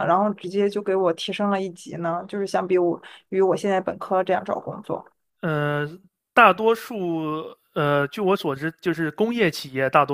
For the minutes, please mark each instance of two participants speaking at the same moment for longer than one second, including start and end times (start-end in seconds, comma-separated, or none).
none